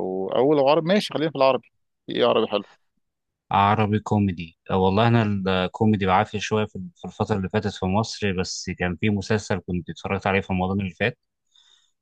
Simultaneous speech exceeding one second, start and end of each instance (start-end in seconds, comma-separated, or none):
none